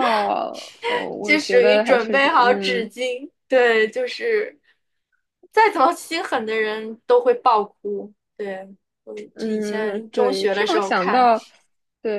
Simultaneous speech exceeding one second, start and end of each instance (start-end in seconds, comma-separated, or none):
1.2-2.9, 9.3-11.3